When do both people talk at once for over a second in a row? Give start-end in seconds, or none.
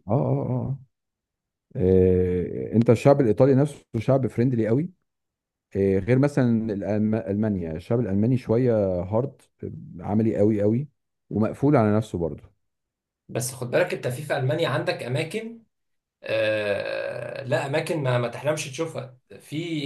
none